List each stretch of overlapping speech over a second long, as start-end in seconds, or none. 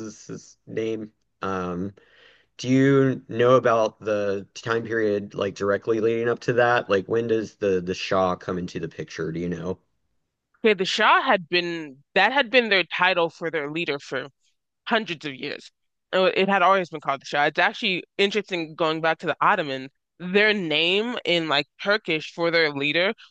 none